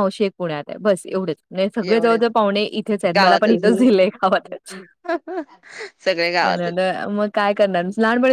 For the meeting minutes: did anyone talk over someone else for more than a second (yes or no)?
no